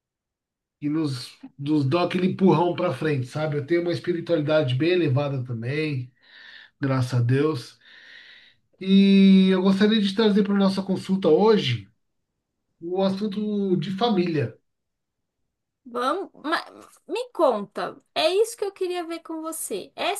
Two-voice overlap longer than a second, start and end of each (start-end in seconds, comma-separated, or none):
none